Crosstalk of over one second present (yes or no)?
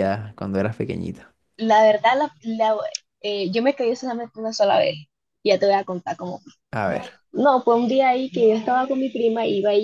no